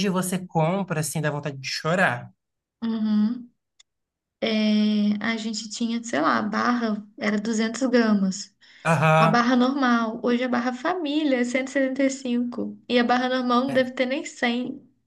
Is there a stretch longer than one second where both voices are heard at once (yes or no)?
no